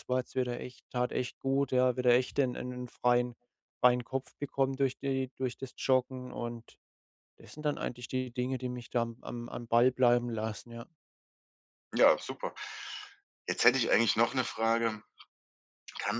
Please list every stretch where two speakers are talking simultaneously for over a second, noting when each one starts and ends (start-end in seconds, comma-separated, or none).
none